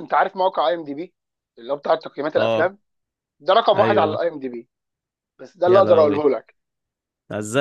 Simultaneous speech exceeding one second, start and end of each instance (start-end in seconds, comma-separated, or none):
none